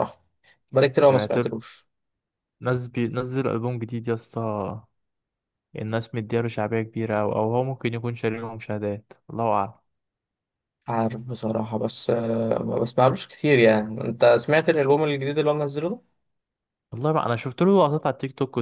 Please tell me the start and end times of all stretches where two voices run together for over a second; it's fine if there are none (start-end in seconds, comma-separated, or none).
none